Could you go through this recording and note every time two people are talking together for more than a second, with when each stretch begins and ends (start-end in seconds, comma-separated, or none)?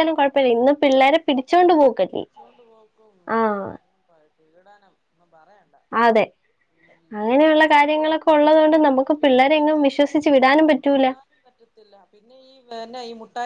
8.3-10.2